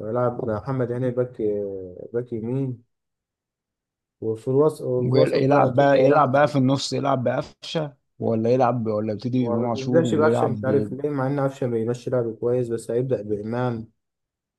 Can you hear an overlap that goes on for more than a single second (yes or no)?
yes